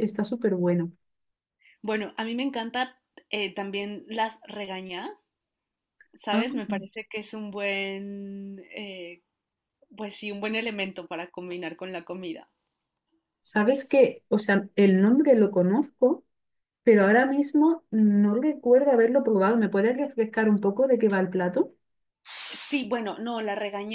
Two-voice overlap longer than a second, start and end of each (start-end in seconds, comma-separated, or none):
none